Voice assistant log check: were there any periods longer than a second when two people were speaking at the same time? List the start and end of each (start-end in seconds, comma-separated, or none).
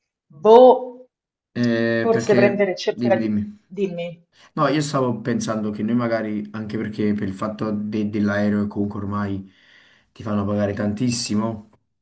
2.0-3.3